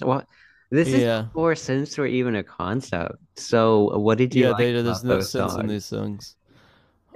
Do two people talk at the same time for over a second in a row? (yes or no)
yes